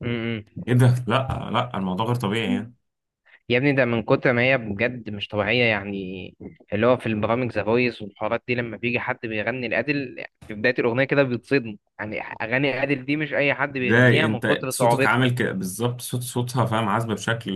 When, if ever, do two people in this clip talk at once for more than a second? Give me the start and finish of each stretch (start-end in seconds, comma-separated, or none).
13.7-15.3